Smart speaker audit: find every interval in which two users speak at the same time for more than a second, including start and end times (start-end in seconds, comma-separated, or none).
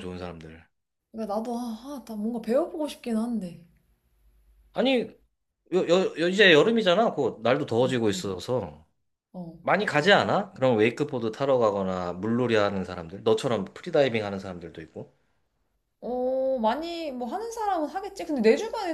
none